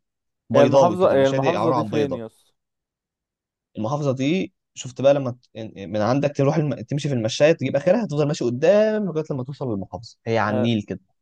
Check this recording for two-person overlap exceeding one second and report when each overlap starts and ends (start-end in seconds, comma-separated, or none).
0.5-2.2